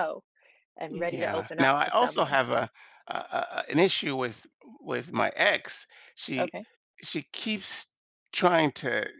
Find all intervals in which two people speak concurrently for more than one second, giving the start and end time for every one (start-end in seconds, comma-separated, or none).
0.9-2.4